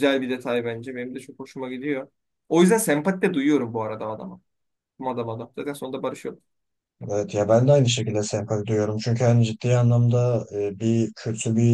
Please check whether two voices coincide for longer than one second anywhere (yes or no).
no